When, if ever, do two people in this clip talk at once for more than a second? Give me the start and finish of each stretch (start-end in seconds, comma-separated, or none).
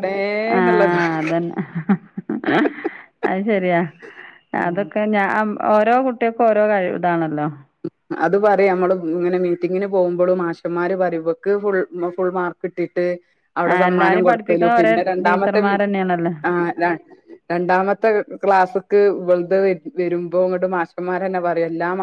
13.7-15.7